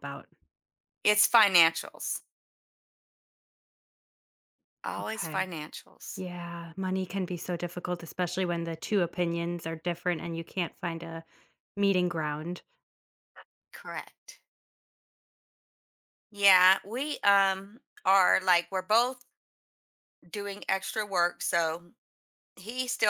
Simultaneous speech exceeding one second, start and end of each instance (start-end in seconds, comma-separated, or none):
none